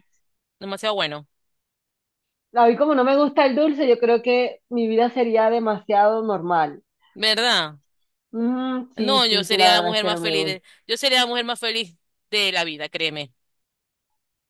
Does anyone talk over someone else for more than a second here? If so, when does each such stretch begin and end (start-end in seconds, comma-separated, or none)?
8.9-10.3